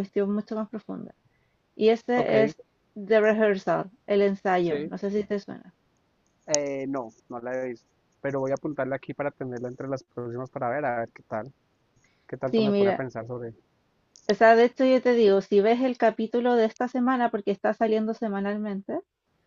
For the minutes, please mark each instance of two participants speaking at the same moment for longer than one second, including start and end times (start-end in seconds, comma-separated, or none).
none